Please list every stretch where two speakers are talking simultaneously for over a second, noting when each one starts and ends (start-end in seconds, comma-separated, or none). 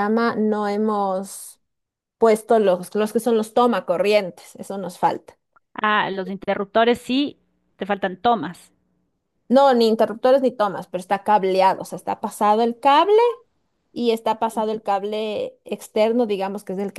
none